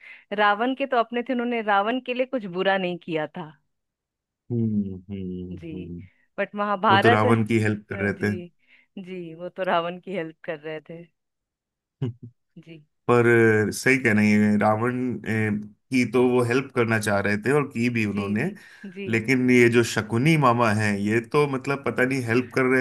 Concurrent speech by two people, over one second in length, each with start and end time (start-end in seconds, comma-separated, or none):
6.9-8.3